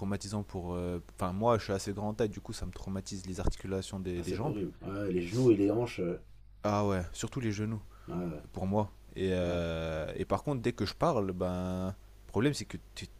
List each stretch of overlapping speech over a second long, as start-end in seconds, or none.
none